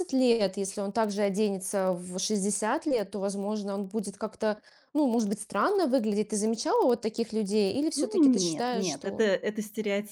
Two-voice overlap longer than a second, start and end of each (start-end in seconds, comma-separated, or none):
8.0-9.2